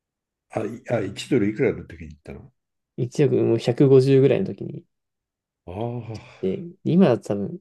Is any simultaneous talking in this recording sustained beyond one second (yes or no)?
no